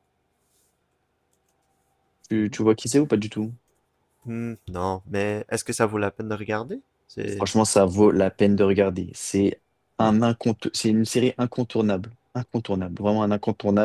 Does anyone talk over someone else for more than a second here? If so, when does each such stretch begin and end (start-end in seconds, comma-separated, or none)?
none